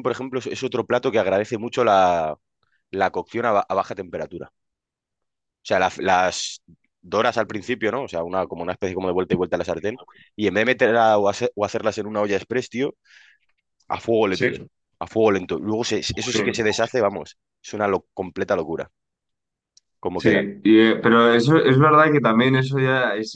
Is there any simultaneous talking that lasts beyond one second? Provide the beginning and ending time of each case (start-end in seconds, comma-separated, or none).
none